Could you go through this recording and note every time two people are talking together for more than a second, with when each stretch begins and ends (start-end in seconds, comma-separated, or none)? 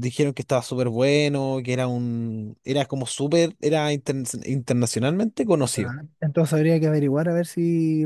none